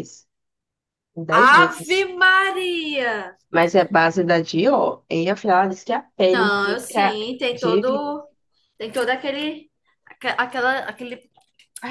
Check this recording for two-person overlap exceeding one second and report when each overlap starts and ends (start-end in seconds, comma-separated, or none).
6.3-8.1